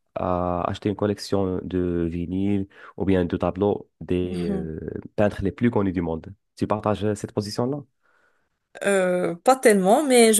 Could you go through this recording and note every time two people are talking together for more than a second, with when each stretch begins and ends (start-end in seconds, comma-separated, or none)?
none